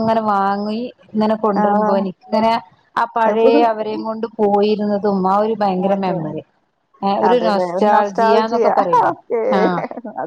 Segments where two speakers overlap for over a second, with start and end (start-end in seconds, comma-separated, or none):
7.3-8.7